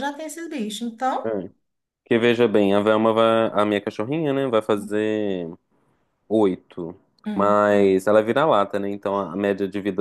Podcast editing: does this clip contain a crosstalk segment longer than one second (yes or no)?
no